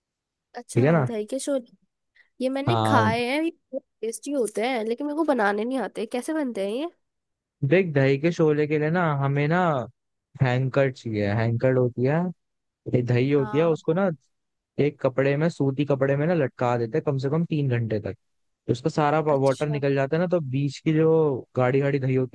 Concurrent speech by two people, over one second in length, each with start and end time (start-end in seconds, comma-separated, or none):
none